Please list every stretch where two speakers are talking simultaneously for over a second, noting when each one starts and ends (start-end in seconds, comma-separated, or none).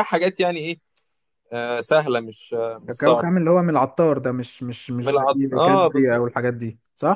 5.0-6.2